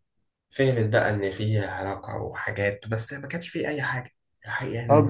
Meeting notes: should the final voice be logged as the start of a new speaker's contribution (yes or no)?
yes